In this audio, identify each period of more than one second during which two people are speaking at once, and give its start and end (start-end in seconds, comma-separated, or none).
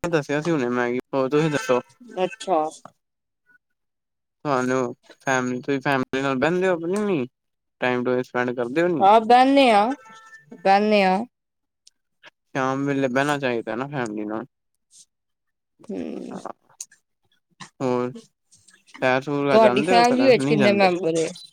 19.5-20.9